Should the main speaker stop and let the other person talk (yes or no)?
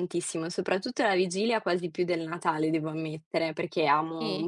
no